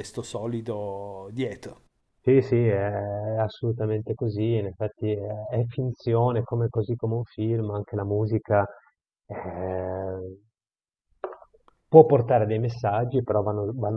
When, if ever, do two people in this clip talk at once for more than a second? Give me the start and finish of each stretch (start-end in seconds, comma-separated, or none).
none